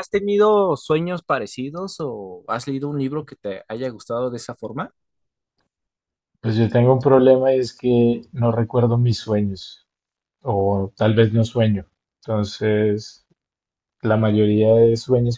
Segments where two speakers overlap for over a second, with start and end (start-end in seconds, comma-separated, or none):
none